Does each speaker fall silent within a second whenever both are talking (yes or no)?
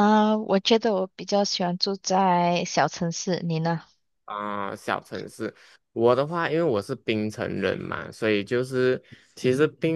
yes